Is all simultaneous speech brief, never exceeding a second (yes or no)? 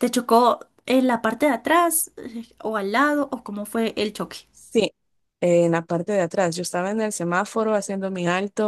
yes